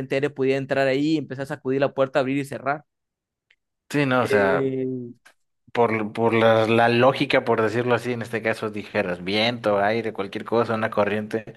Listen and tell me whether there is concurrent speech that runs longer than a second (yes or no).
no